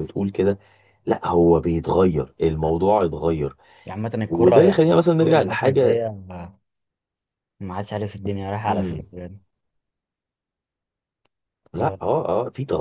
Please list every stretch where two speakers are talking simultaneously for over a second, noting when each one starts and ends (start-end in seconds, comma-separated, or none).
4.2-6.0